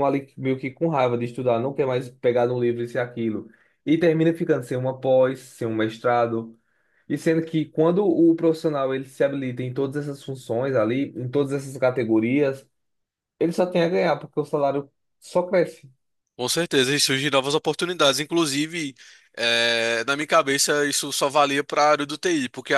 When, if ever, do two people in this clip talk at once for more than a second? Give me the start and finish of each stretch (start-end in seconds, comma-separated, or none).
none